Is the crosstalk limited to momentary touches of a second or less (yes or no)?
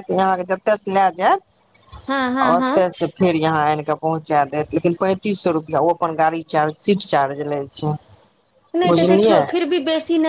yes